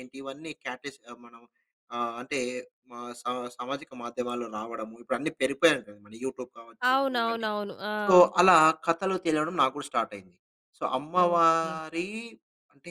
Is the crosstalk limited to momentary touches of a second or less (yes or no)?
yes